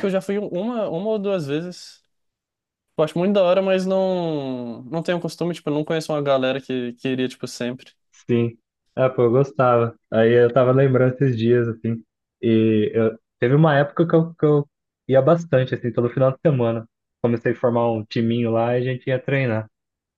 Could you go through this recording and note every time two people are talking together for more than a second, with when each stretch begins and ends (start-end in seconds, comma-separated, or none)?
none